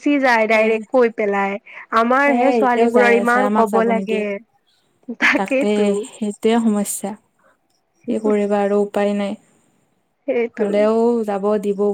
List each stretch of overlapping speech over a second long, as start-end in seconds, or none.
2.2-4.2